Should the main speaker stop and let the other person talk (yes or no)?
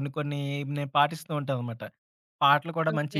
no